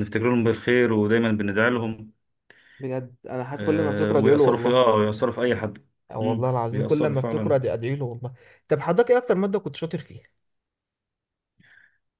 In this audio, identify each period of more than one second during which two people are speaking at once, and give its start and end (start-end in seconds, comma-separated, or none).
3.5-4.9, 6.1-7.6